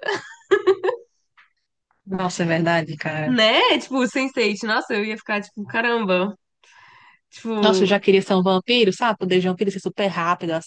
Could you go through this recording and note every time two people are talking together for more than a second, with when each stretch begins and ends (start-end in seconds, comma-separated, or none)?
none